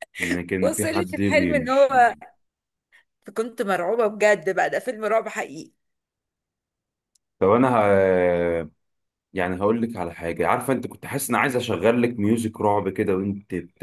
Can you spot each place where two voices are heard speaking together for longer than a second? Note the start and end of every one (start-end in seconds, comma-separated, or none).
0.6-1.9